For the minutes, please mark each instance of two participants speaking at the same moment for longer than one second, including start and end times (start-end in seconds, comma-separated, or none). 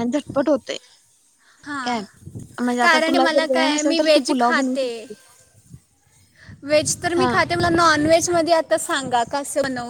2.8-4.9